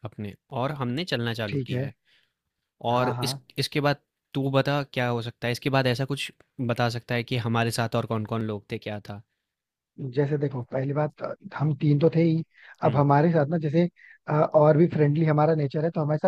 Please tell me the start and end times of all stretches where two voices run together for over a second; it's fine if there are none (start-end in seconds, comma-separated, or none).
none